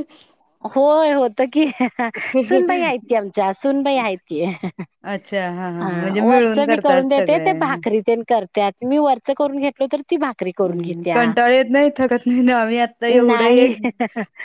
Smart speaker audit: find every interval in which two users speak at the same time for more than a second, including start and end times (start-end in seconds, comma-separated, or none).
5.8-7.5